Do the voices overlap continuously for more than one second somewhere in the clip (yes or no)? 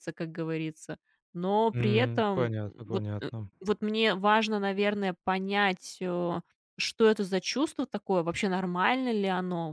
yes